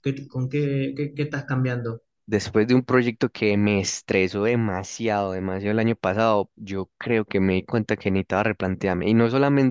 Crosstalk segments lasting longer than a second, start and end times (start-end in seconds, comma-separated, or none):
none